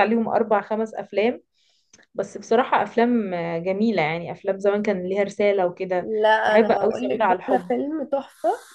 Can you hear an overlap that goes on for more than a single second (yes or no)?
yes